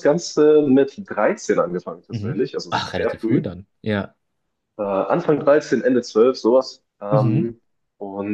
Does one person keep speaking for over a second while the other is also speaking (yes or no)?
yes